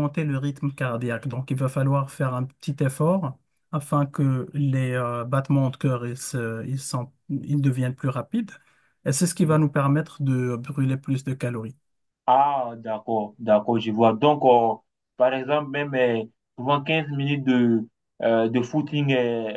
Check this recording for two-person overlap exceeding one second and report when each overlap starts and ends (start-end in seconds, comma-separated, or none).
none